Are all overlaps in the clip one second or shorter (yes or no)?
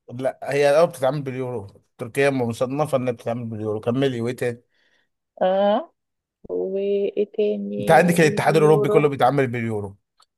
no